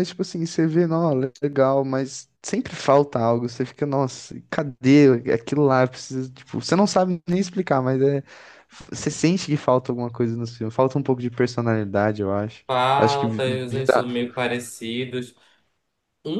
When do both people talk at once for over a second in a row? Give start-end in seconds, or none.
12.7-14.1